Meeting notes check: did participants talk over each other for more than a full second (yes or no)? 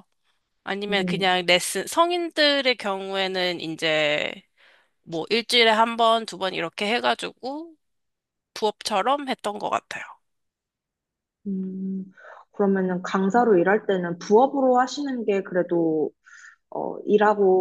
no